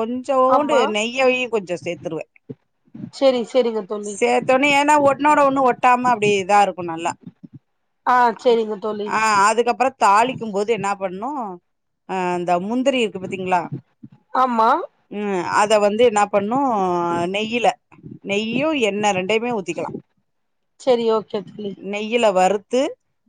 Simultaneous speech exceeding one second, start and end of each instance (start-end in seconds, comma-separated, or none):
none